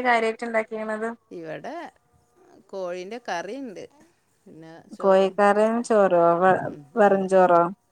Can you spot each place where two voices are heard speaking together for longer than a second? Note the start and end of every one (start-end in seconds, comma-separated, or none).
none